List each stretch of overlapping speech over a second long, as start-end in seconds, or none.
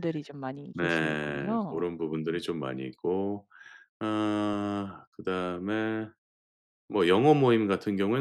0.7-2.5